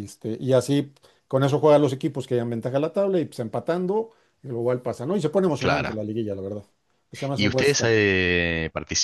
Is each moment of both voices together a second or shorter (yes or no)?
yes